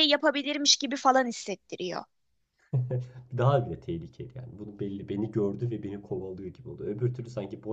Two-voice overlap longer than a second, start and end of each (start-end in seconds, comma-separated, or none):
none